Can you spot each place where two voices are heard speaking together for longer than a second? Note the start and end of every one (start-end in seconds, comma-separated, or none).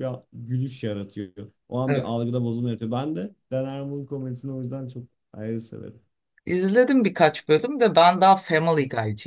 none